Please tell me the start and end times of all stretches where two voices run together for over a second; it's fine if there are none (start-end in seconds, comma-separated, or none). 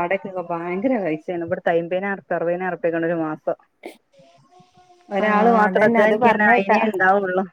5.2-6.8